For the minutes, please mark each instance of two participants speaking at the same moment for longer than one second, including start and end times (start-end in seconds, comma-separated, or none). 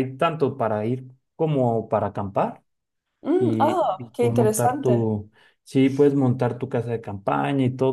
3.4-5.1